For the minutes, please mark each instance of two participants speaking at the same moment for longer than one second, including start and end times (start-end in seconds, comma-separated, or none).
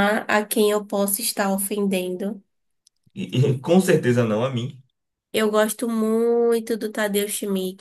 none